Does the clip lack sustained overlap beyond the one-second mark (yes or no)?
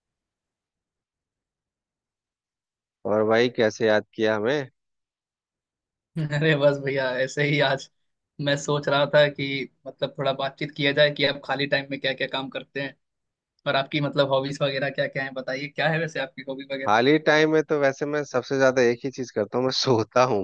yes